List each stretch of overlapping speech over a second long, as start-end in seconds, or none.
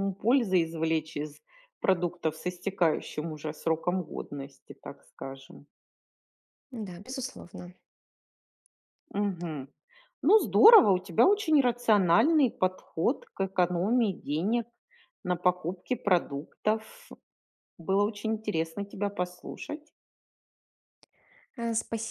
none